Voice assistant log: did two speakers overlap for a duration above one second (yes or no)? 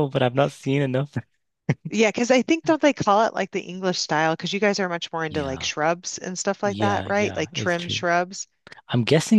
yes